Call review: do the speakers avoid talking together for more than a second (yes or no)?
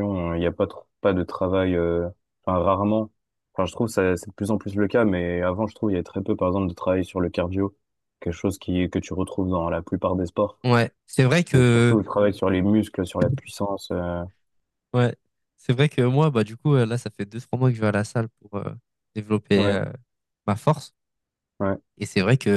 yes